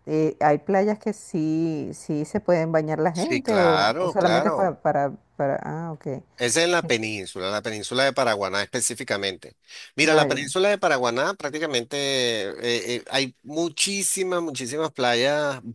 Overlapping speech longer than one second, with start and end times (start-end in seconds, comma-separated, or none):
3.1-4.8